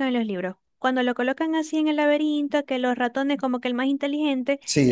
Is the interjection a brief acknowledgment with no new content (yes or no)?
yes